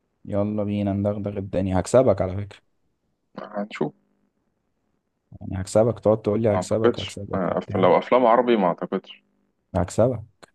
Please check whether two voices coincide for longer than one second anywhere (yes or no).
yes